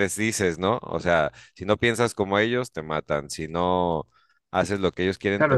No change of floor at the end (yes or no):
no